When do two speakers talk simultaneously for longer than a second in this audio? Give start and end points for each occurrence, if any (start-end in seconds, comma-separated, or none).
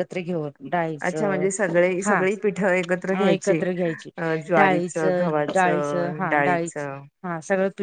5.5-6.9